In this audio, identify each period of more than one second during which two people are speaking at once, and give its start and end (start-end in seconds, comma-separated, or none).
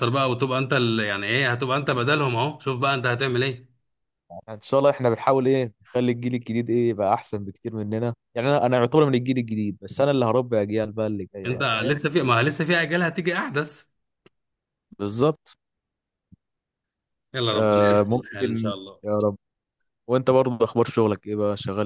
17.5-19.0